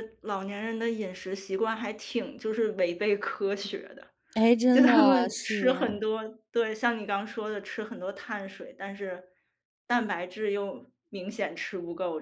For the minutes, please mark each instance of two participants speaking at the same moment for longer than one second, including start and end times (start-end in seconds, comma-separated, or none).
4.7-5.9